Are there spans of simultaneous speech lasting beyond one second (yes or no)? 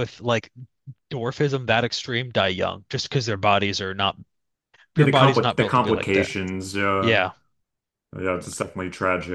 yes